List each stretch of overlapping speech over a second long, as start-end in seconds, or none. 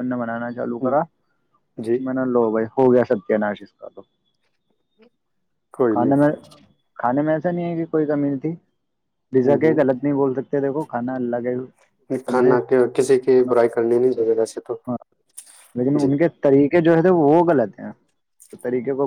13.5-14.8